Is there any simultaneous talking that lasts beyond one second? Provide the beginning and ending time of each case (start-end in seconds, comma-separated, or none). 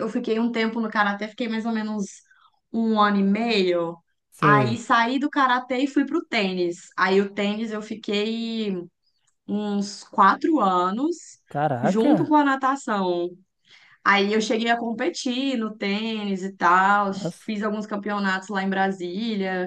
none